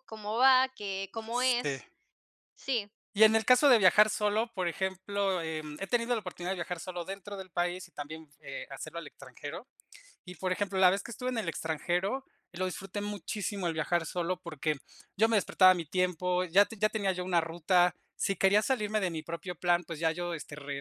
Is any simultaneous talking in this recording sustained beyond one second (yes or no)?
no